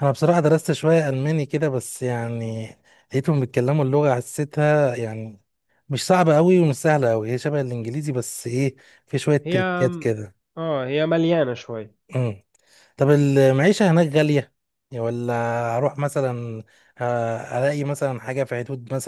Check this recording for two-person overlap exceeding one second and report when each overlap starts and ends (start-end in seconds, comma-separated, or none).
none